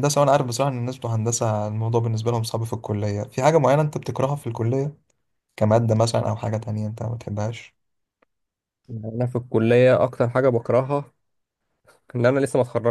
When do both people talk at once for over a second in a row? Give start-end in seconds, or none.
none